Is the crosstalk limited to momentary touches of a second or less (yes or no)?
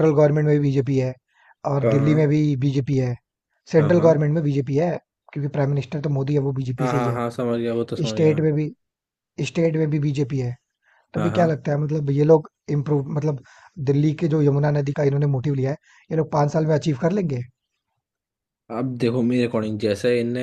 yes